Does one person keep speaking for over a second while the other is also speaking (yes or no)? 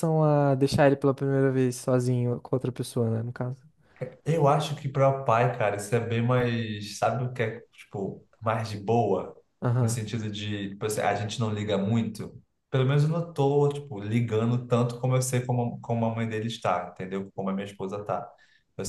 no